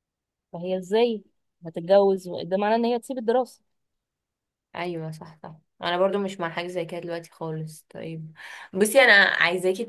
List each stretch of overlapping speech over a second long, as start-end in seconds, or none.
none